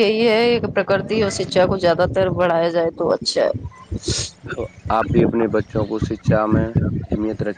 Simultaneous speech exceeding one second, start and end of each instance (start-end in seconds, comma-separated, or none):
none